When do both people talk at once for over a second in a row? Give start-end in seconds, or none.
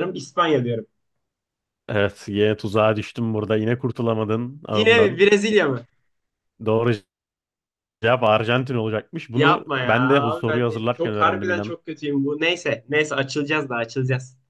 9.3-11.8